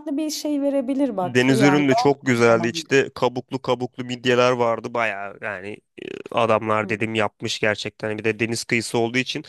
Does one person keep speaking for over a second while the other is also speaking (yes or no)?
yes